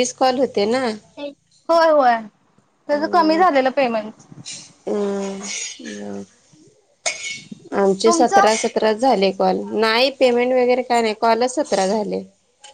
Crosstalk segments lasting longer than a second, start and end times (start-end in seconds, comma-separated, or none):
none